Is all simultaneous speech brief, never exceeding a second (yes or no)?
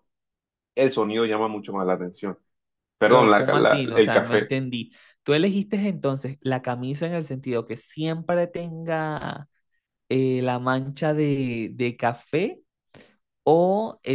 no